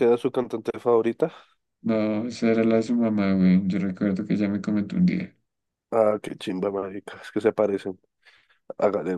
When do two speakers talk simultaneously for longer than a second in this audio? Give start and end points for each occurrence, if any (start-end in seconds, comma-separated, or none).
none